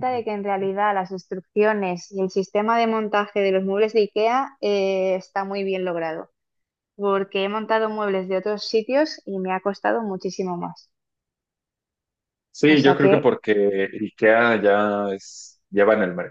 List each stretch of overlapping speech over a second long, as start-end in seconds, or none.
none